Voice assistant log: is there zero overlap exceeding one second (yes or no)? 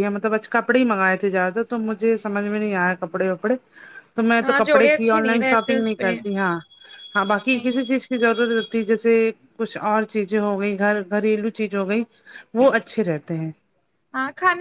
no